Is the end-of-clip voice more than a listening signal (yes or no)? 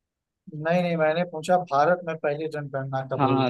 yes